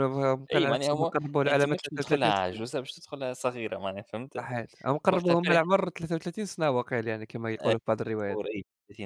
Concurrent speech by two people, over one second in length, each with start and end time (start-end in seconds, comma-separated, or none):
0.5-2.6